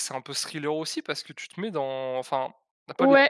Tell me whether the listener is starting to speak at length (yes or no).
yes